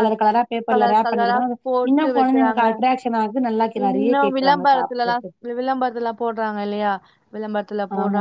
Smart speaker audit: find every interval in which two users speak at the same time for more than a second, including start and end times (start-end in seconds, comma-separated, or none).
0.7-2.6, 3.9-5.2